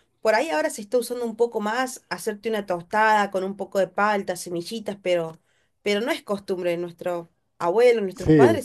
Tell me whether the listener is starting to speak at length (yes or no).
no